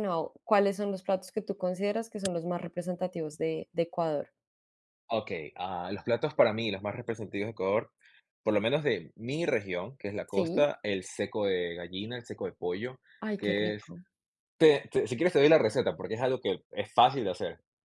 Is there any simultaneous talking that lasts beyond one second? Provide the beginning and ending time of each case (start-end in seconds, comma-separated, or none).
none